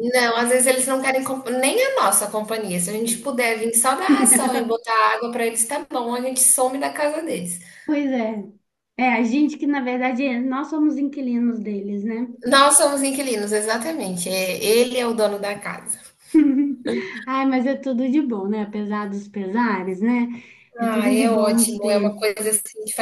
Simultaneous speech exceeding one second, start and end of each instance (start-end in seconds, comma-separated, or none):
20.8-22.3